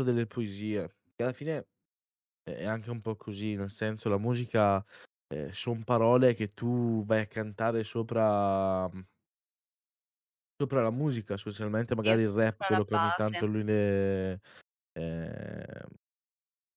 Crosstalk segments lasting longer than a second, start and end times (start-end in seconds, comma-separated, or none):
11.9-13.5